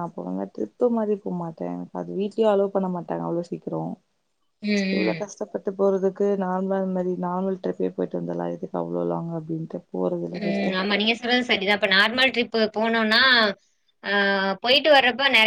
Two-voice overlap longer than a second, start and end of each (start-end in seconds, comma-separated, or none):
none